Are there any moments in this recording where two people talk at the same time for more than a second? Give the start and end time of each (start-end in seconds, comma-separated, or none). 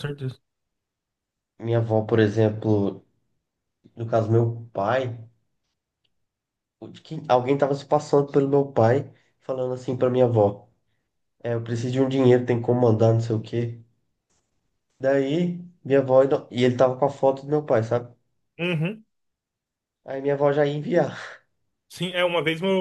none